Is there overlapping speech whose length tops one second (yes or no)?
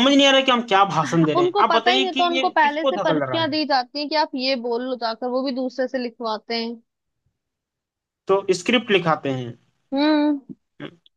yes